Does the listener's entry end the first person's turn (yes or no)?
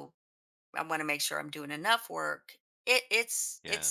no